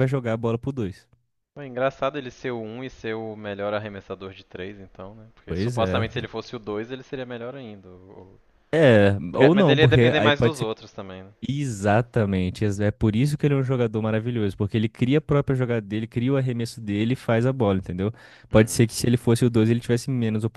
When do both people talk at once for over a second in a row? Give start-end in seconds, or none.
9.3-10.7